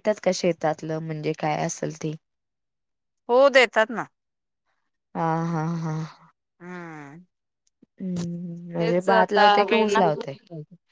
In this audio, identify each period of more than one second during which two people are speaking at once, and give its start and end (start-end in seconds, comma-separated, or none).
8.8-10.3